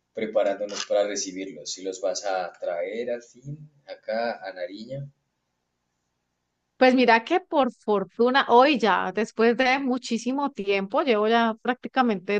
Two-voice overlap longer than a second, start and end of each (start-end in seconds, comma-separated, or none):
none